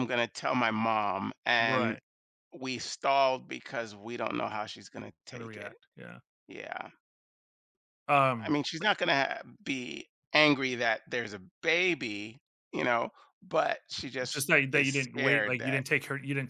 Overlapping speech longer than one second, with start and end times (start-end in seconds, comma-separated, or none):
14.3-15.8